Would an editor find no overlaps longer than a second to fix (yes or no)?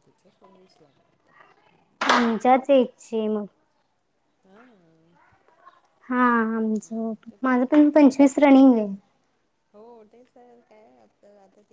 yes